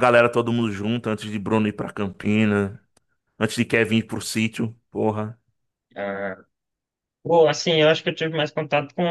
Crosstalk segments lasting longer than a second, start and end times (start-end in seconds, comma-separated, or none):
none